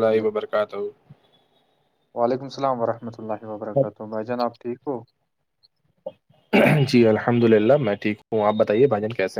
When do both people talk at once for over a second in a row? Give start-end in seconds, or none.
none